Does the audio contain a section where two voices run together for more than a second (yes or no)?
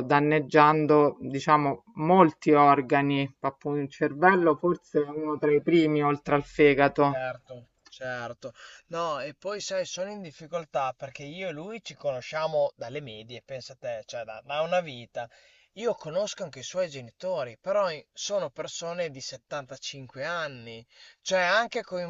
no